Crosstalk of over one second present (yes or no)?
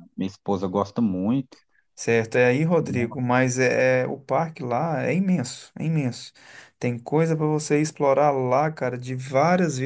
no